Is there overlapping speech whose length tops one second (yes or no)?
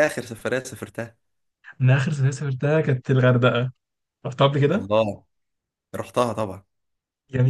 no